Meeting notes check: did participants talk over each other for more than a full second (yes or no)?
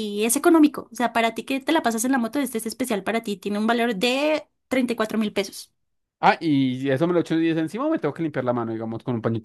no